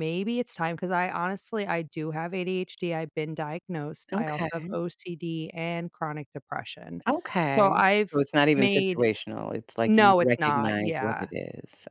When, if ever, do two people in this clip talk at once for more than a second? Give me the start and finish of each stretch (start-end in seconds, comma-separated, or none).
9.8-11.3